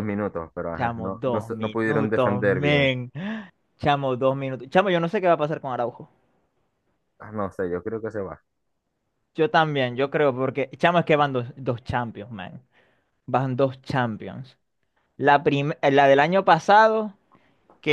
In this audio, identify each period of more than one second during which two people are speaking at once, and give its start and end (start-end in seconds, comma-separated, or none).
0.8-2.9